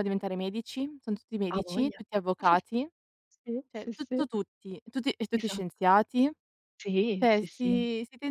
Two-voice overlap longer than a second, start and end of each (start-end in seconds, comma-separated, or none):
none